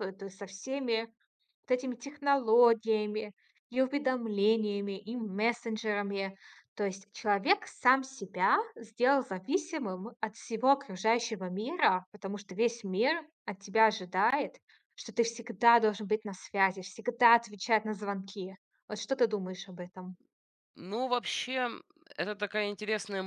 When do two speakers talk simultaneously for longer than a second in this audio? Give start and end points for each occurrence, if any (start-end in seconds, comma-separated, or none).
none